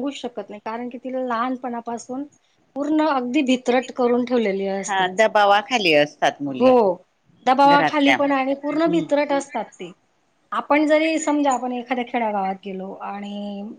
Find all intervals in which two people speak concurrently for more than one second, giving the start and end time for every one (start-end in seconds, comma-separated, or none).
7.7-9.0